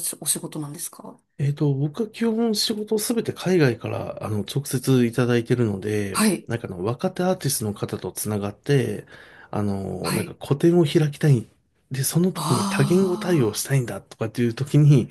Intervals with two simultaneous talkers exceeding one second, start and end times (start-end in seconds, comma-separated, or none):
12.3-13.7